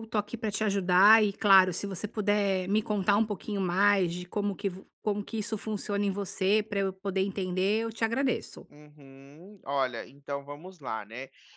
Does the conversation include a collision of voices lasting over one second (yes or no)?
no